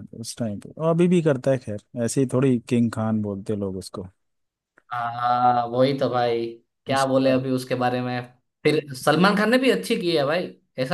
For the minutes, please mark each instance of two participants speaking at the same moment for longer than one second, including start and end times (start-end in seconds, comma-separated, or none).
none